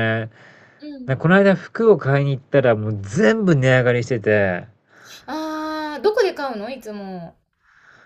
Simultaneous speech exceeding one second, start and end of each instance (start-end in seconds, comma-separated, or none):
none